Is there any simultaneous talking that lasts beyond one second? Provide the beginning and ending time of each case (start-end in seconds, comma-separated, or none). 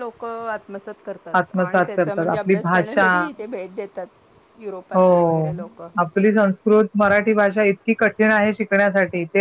1.4-3.1